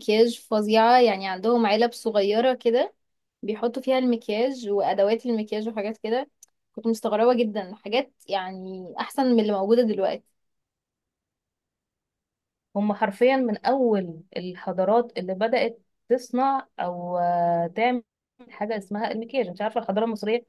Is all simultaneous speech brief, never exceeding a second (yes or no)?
yes